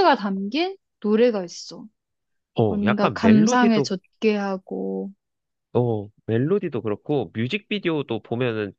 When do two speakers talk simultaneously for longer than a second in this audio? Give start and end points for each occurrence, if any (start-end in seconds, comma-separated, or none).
2.7-3.9